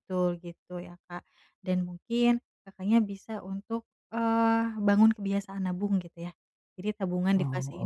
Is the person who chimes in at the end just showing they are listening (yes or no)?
yes